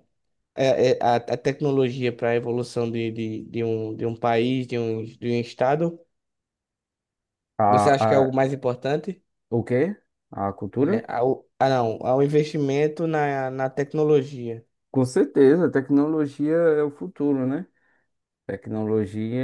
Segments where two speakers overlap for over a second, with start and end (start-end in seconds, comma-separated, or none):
none